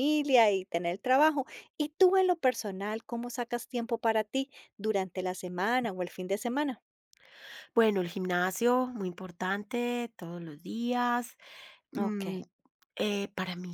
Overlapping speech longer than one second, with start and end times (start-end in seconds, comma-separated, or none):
none